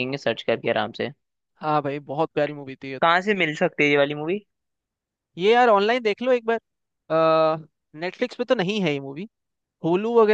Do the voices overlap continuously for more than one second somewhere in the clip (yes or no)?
no